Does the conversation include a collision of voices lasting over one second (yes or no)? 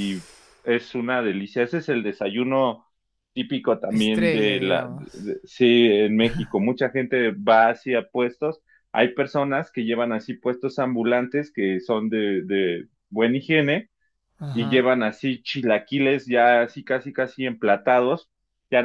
yes